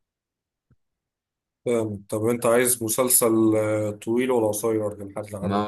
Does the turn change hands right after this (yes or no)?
yes